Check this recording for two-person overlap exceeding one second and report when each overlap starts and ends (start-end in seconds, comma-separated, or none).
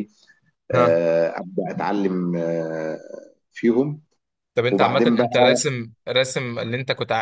none